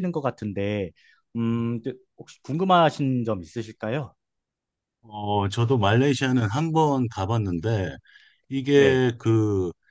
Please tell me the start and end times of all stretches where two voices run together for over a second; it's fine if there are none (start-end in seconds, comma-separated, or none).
none